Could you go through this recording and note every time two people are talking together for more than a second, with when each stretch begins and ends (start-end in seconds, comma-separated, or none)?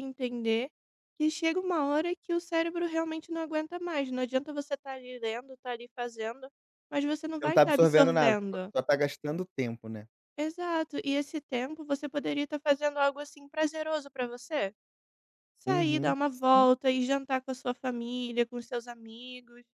7.4-8.7